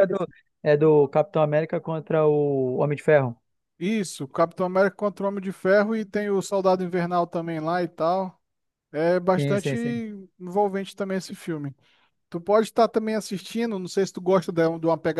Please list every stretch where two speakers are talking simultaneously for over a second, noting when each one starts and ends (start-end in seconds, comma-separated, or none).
none